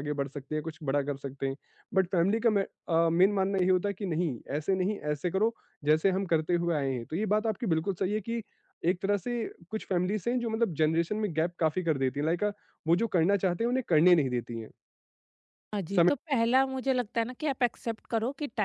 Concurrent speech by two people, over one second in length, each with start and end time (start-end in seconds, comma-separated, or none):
none